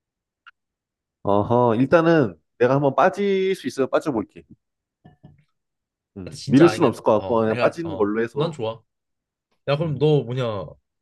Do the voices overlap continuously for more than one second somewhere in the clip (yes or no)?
yes